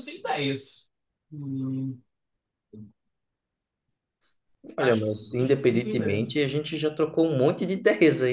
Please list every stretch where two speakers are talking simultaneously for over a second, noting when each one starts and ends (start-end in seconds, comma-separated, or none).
4.8-6.3